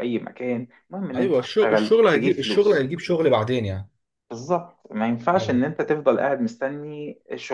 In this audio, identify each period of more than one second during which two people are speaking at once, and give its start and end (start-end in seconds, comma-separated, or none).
1.2-2.9